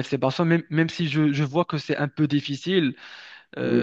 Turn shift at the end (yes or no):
yes